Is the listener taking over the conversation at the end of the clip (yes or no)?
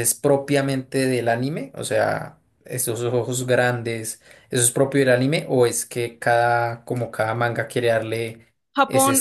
yes